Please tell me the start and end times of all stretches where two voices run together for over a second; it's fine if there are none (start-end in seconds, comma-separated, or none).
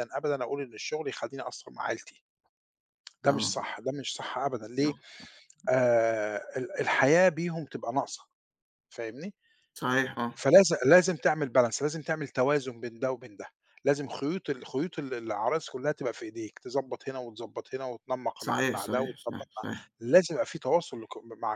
18.4-19.6